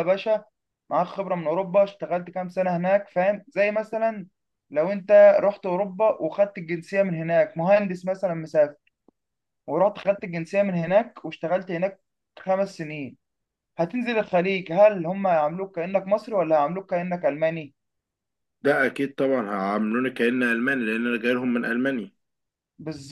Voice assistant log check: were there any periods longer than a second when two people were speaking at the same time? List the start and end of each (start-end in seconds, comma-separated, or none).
none